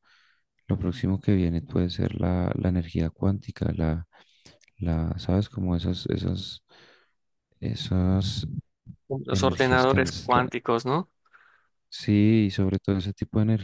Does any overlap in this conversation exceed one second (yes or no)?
yes